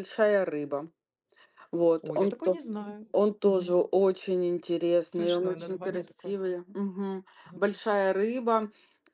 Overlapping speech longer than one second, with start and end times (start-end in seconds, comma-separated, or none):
5.1-6.4